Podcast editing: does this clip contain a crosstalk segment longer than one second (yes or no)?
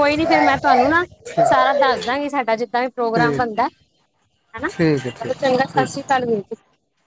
yes